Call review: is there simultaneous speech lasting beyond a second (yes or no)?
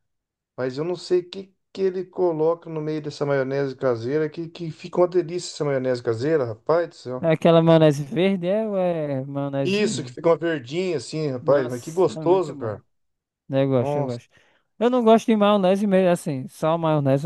yes